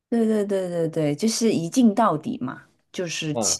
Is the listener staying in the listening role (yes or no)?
yes